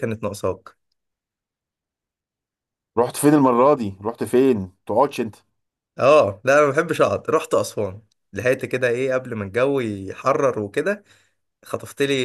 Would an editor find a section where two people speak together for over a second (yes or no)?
no